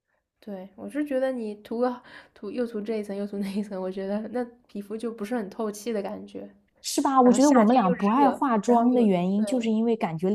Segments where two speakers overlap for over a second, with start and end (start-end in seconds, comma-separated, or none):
7.2-9.4